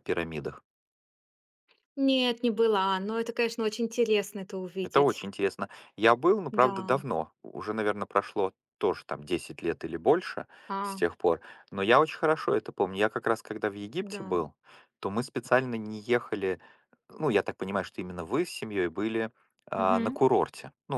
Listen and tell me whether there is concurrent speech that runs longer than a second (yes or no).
no